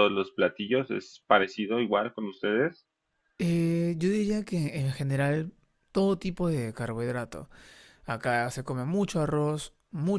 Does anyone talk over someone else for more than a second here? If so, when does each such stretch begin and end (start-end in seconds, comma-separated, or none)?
none